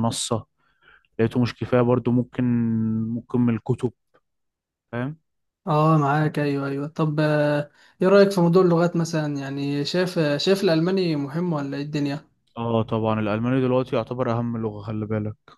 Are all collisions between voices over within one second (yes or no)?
yes